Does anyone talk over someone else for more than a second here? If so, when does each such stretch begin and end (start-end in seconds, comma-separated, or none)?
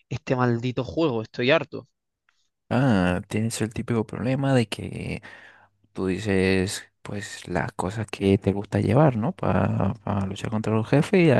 none